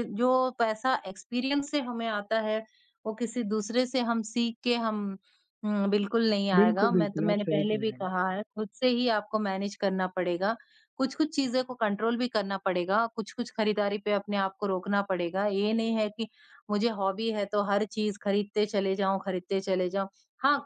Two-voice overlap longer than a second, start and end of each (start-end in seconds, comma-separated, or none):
6.5-8.1